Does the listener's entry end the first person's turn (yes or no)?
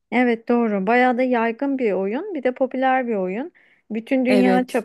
no